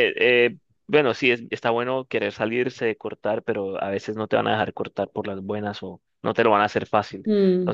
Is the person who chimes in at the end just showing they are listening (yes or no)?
no